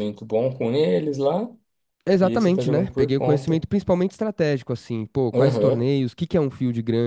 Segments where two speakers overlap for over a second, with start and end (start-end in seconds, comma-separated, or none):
2.2-3.7